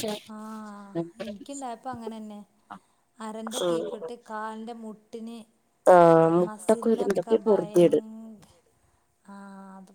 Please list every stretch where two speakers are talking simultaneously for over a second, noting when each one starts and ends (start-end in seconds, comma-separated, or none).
6.5-8.0